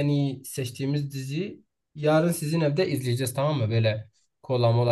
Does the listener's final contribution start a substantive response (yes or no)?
no